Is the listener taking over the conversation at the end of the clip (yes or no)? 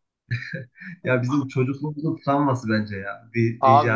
yes